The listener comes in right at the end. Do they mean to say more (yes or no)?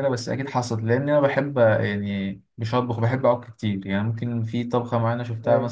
no